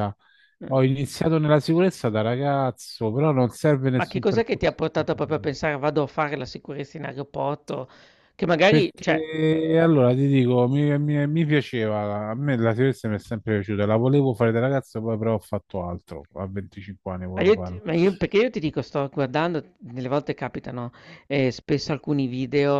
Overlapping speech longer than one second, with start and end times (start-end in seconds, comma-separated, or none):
4.0-5.5